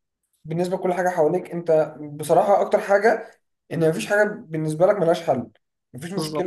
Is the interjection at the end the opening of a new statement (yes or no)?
no